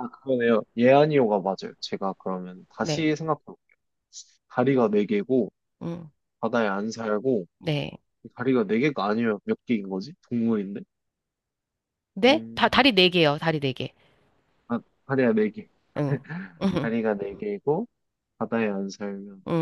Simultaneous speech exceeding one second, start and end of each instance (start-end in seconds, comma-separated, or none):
none